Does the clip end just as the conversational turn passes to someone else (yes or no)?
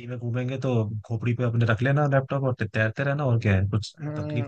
yes